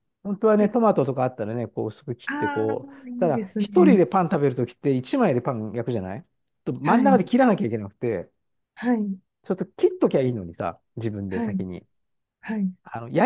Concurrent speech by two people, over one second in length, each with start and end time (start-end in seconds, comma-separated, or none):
2.3-4.0